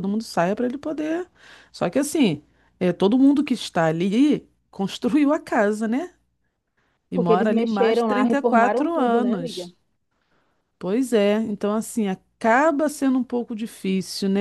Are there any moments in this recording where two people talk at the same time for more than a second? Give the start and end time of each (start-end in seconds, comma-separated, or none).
7.1-9.7